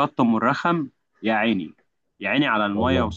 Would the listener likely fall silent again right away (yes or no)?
yes